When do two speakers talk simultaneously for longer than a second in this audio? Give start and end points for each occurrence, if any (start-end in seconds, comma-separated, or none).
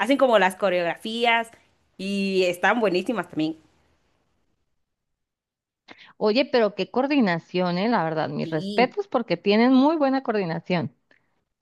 none